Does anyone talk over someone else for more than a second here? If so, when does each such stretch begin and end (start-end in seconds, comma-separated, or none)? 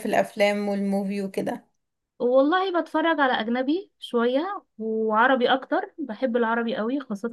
none